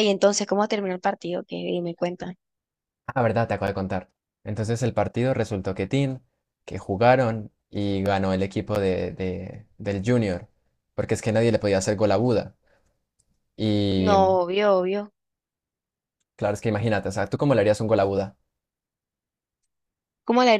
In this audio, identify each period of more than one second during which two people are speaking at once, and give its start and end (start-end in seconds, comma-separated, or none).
none